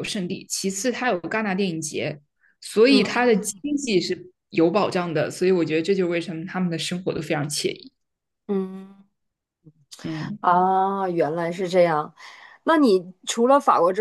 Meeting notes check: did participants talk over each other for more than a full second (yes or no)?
no